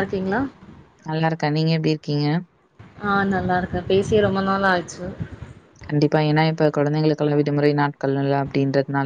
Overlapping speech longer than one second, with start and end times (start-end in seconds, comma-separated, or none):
none